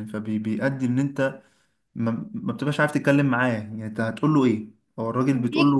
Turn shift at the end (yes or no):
no